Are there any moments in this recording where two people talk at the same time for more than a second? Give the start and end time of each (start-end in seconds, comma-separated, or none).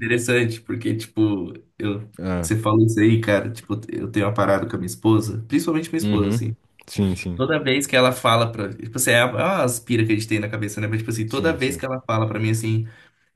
none